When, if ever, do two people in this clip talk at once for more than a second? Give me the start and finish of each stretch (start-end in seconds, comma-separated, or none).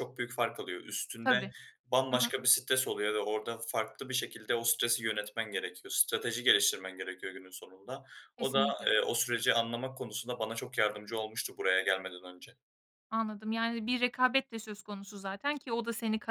none